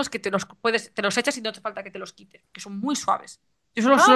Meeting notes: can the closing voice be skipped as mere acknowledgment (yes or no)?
yes